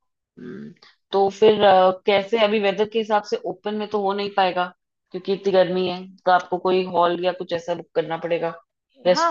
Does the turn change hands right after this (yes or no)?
yes